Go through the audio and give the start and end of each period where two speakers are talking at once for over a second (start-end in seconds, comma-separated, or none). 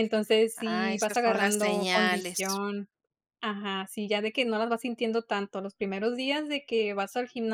0.6-2.6